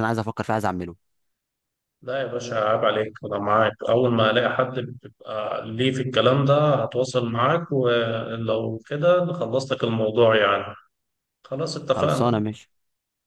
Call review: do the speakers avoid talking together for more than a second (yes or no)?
yes